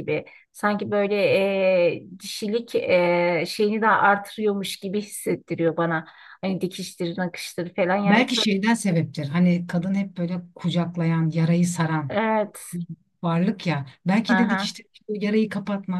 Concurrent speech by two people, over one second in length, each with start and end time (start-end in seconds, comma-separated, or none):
none